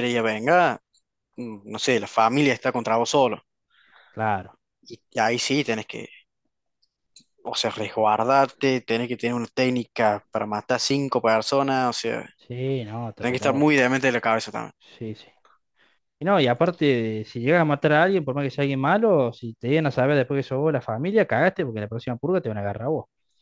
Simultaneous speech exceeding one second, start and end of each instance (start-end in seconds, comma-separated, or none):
none